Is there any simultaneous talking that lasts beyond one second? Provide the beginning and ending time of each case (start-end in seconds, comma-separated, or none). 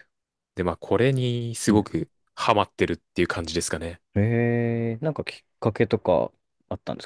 none